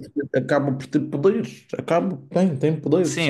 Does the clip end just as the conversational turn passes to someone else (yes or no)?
yes